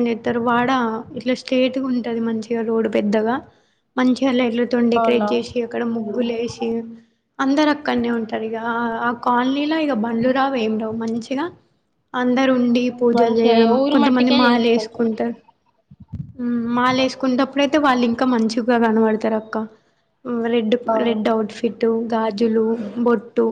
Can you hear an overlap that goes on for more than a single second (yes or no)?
yes